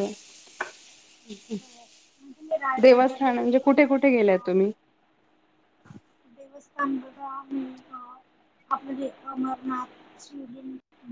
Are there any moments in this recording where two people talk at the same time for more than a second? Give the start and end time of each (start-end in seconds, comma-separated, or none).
2.8-4.5